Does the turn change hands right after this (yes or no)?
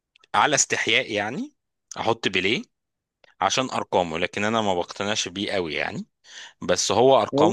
yes